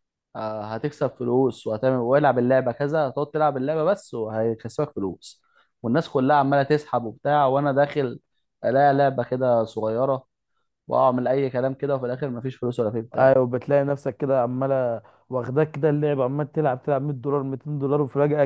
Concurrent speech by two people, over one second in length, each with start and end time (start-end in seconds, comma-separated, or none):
none